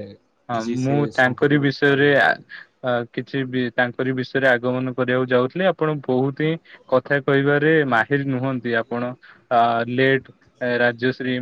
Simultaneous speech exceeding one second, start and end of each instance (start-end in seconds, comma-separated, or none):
0.5-2.5